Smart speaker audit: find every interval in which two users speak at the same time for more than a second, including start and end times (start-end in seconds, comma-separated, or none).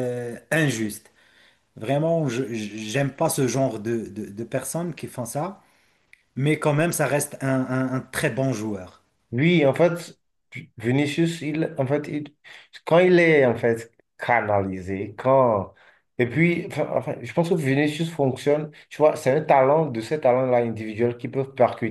none